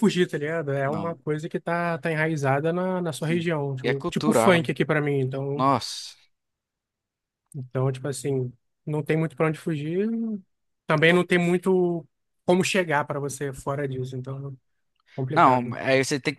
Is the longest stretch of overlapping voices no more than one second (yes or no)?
no